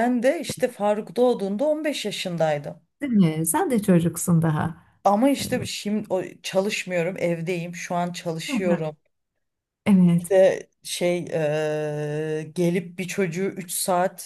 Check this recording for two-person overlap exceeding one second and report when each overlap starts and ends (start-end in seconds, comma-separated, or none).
none